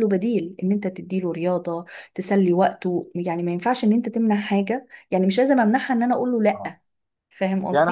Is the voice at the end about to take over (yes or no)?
yes